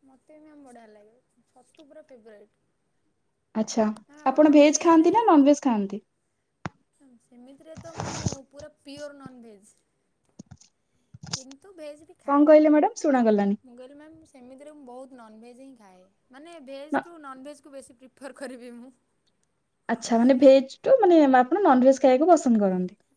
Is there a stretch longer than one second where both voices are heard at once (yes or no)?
yes